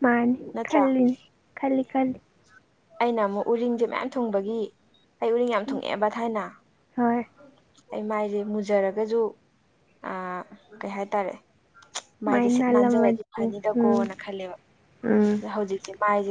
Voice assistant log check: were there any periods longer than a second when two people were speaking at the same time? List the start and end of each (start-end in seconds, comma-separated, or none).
12.2-14.1